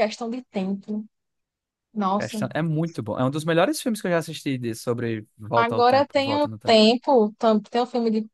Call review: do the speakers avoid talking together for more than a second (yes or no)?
no